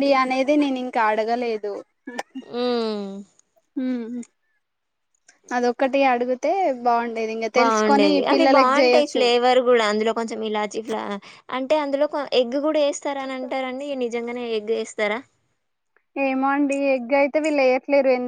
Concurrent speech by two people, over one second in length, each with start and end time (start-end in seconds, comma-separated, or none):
7.6-9.2